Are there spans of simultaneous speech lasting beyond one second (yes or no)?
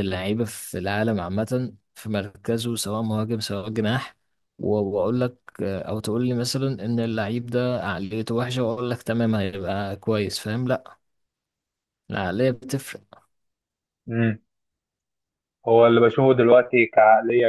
no